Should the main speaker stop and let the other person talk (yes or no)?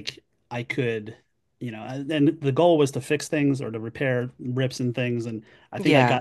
no